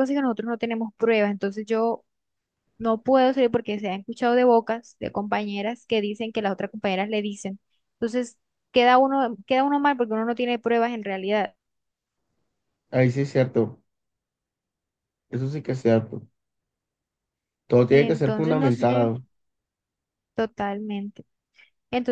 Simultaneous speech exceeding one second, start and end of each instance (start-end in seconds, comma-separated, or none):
17.9-19.1